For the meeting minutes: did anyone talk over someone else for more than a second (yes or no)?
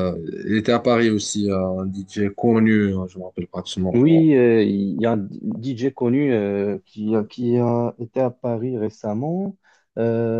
no